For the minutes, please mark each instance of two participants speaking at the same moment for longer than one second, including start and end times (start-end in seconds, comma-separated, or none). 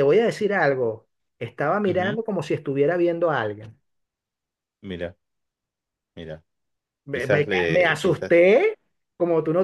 7.1-8.4